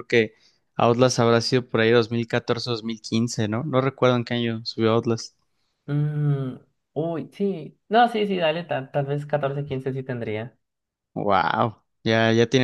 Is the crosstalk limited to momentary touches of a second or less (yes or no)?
yes